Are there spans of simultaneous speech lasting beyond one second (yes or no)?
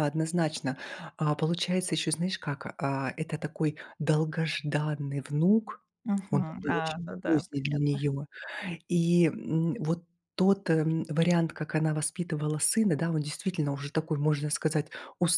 yes